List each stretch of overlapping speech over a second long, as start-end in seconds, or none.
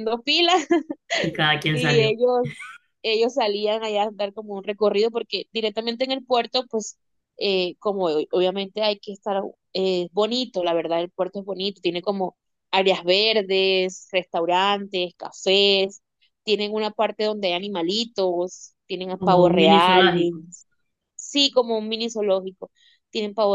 19.1-20.4